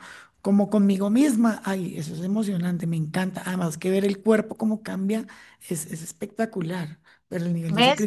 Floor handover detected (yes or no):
yes